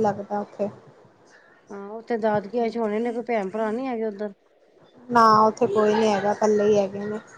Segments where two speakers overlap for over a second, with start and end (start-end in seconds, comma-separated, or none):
none